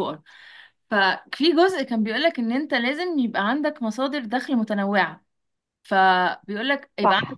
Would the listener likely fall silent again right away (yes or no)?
yes